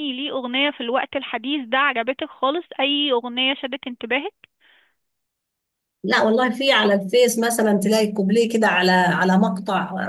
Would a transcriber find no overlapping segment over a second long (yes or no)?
yes